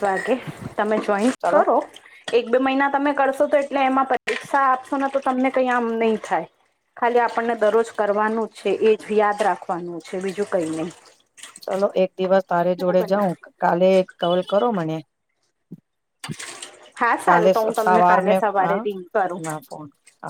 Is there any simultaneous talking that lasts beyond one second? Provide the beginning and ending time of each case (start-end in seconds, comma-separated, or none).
17.3-19.4